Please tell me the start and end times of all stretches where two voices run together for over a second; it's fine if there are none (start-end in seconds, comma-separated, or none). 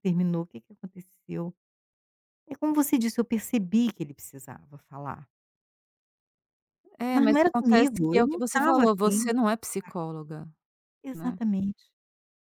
7.1-9.3